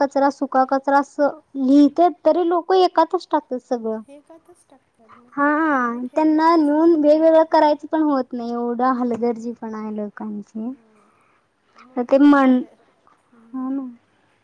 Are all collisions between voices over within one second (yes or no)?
yes